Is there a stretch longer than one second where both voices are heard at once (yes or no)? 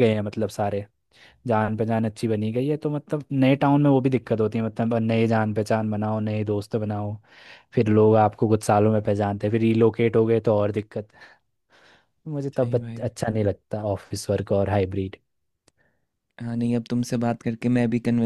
no